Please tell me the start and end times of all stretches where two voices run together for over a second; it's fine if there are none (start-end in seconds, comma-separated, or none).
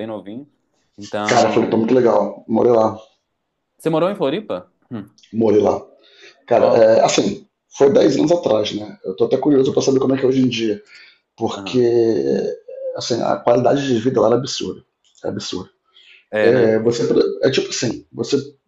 none